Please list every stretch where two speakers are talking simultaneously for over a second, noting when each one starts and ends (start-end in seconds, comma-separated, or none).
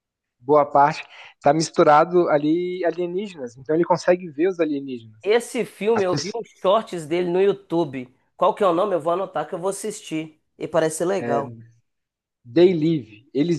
none